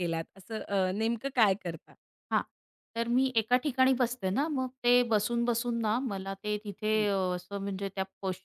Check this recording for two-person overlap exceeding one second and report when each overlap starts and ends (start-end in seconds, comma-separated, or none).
none